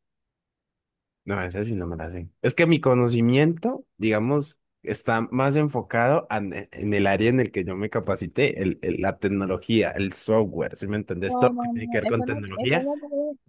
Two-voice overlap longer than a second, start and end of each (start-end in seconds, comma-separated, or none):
11.2-12.9